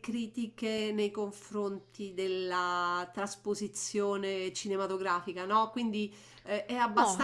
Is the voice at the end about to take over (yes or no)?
no